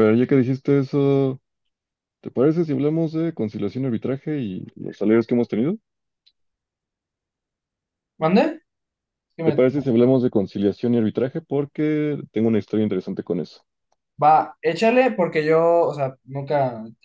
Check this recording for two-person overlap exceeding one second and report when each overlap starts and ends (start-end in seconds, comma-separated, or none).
none